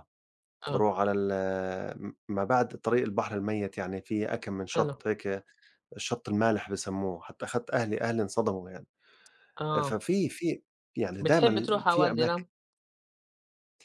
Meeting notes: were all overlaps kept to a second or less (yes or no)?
no